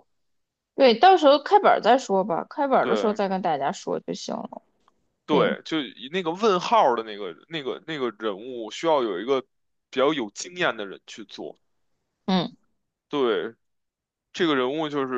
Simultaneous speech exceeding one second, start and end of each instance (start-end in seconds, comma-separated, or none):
none